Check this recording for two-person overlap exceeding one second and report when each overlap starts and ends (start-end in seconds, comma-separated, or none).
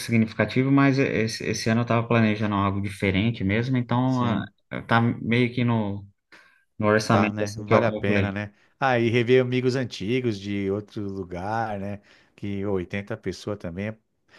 7.1-8.4